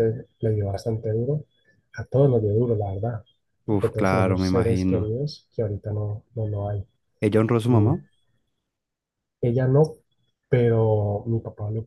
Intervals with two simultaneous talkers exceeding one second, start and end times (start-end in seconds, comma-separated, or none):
3.6-5.1